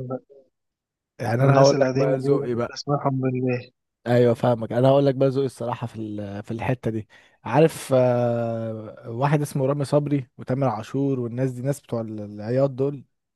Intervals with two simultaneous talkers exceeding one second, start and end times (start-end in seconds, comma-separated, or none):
1.4-2.8